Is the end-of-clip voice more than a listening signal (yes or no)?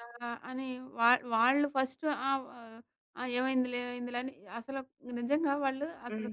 no